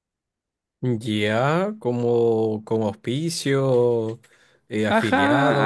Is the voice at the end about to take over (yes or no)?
yes